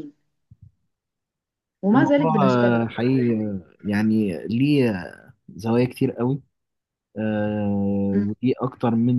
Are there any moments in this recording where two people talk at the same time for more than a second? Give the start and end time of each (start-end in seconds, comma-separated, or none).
1.9-3.4